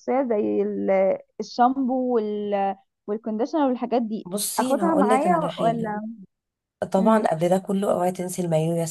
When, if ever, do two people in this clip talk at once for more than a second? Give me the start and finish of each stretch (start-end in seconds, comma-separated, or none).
4.2-6.0